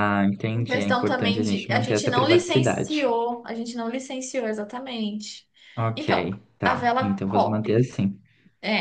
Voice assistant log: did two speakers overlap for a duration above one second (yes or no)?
yes